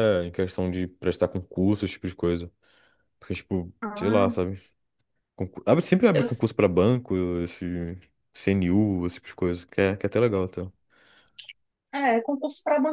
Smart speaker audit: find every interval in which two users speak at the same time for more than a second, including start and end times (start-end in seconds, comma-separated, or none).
none